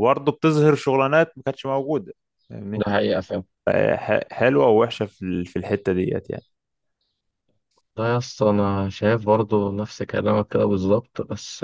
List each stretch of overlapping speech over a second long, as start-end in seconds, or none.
none